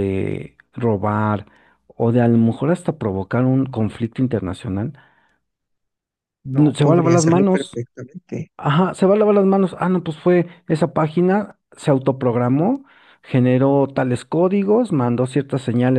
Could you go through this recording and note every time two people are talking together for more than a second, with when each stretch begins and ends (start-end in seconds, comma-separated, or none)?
6.5-7.8